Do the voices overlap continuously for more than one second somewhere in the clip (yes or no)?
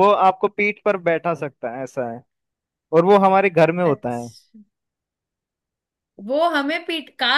no